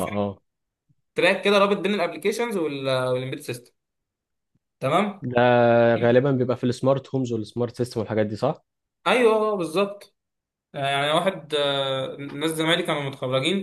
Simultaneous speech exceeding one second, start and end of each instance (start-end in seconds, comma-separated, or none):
none